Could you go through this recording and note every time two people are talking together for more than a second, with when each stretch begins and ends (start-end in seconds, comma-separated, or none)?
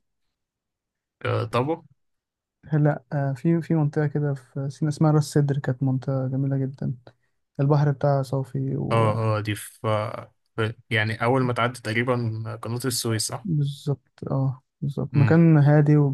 none